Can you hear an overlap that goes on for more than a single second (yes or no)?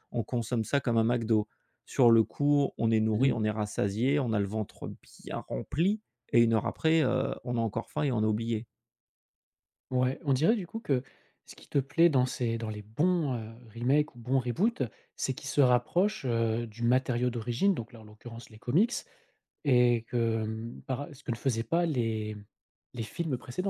no